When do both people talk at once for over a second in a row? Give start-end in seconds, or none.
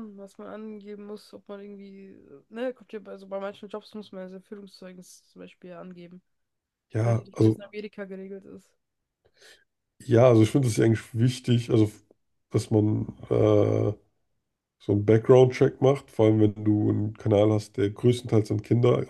none